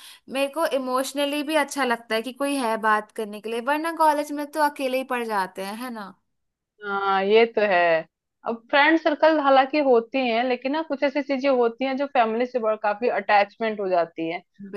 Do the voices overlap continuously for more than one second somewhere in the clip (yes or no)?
no